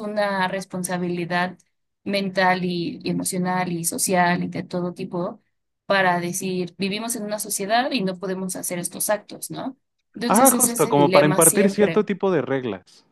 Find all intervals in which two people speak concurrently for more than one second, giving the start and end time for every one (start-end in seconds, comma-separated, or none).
10.3-12.1